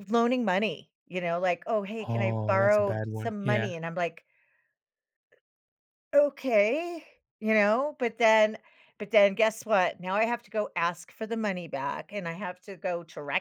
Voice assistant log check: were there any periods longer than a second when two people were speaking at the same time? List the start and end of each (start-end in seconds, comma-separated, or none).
2.0-3.7